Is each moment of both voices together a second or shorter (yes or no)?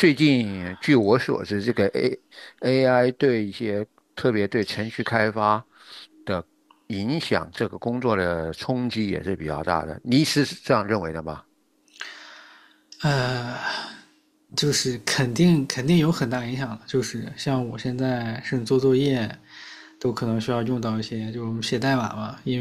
yes